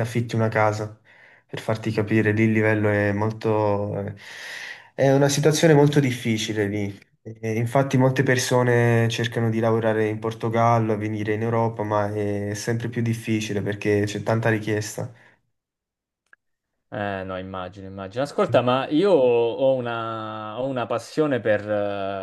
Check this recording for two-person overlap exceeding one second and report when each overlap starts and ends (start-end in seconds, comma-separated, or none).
none